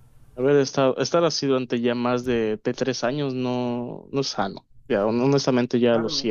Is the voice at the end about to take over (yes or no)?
yes